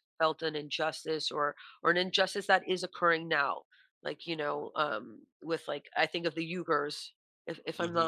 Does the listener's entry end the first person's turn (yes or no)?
no